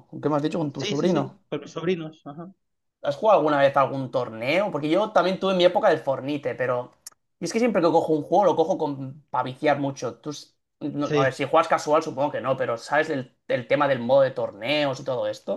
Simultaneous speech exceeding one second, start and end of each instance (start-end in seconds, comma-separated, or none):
none